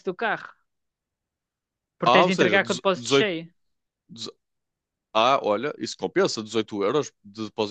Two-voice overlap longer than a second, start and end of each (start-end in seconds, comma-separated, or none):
2.0-3.3